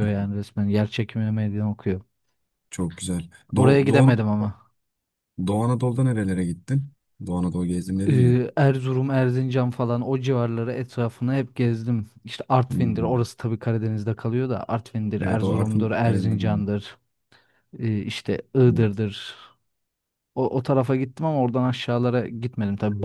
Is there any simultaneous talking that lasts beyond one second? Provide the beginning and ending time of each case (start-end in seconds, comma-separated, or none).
15.2-16.6